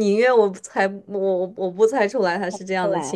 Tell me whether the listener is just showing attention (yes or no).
yes